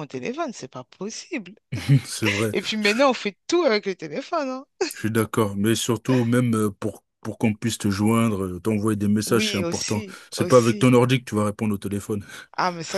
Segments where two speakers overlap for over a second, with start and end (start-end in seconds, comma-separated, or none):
9.3-11.0